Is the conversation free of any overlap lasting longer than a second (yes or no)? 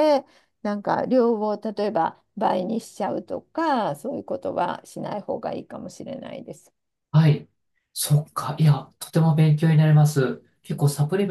yes